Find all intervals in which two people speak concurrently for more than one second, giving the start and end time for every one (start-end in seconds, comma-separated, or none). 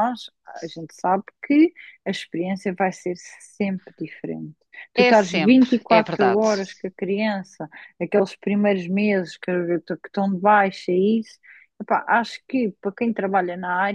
5.0-6.5